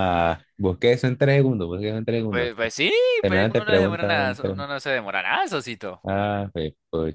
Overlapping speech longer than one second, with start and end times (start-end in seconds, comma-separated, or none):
3.2-4.6